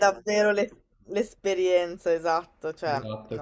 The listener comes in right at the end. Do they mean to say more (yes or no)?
yes